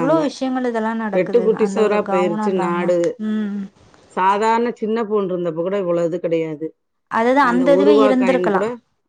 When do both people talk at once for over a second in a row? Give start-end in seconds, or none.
1.1-2.9